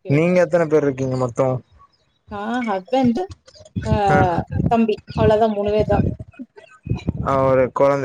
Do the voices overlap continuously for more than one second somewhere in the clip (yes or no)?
no